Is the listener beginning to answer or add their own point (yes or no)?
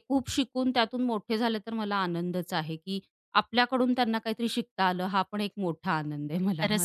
yes